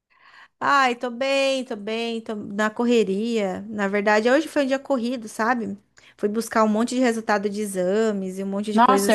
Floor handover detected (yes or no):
yes